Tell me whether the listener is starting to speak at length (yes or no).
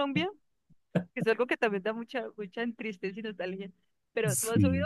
no